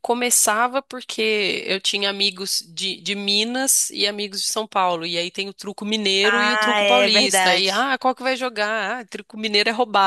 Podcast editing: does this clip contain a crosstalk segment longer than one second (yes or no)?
yes